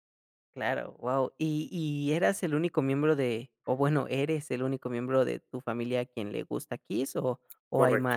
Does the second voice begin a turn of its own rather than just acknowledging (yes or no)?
yes